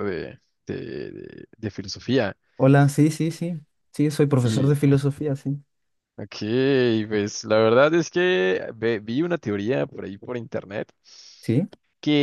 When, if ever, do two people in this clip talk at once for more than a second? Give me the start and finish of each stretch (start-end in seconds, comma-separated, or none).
none